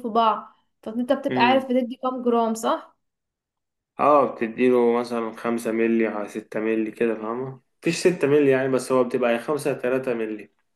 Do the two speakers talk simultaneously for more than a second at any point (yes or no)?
no